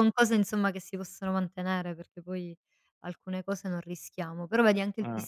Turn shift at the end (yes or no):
no